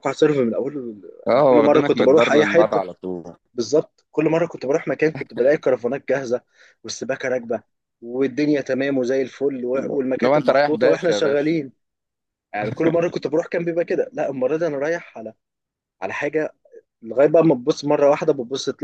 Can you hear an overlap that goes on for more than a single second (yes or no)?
yes